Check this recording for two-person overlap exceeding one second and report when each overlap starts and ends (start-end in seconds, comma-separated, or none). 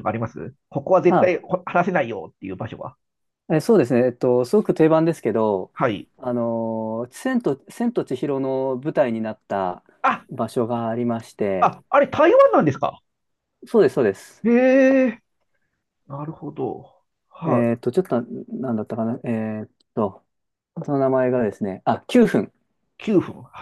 none